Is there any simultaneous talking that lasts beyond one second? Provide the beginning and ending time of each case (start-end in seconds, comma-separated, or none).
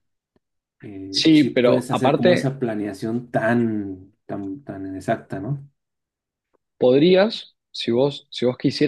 1.1-2.5